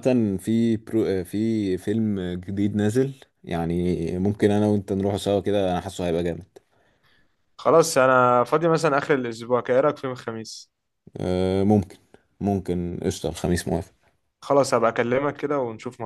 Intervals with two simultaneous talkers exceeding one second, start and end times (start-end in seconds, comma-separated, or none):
none